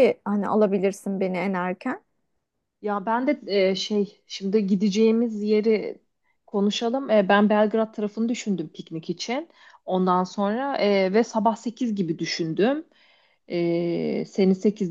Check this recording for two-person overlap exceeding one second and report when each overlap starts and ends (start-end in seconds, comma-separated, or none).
none